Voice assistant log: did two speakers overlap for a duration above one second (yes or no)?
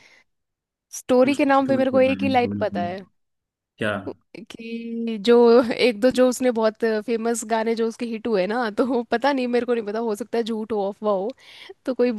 yes